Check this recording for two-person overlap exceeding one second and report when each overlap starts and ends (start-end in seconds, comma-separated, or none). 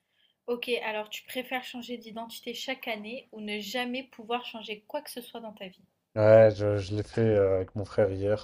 none